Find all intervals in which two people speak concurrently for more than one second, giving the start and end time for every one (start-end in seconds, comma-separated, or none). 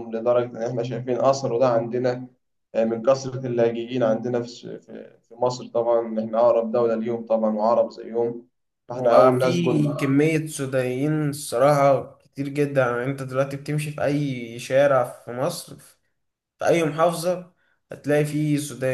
8.9-10.1